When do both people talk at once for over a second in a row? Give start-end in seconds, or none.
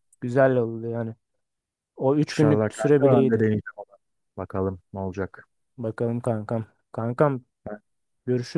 2.3-3.5